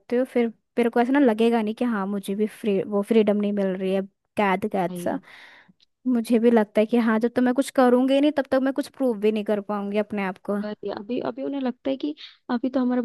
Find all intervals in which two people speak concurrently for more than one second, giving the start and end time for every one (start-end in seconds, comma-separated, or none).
none